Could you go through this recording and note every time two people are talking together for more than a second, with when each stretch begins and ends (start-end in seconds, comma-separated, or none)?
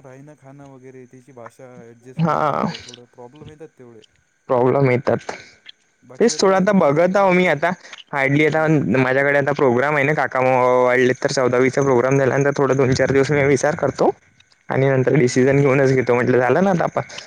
6.2-7.6